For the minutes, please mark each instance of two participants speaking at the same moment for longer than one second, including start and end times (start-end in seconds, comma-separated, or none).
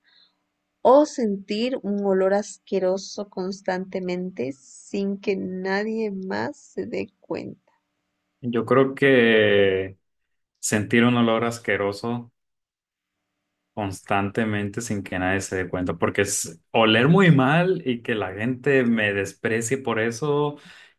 none